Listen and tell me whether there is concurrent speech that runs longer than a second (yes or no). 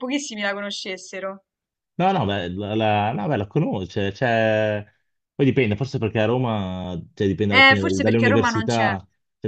yes